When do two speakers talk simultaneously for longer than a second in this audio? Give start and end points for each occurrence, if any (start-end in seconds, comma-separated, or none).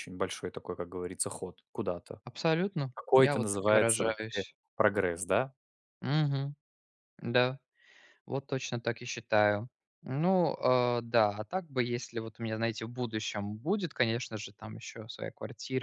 2.9-4.5